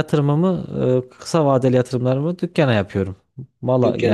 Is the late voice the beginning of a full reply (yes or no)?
yes